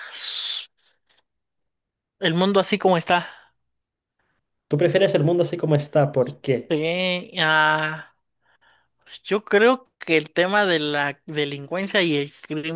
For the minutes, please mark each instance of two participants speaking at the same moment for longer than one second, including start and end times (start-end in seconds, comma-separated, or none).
none